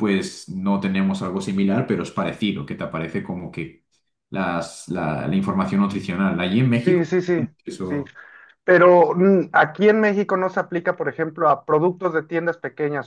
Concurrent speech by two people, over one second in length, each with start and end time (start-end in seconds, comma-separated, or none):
none